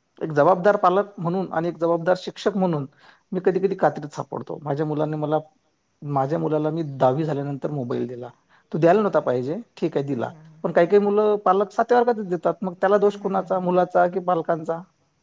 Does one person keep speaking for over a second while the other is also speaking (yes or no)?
yes